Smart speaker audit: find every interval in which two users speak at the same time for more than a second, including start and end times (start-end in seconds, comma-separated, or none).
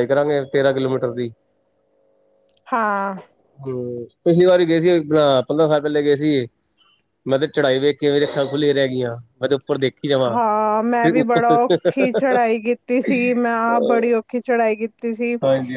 none